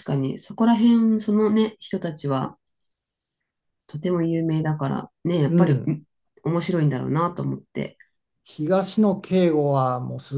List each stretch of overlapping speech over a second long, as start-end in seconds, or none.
none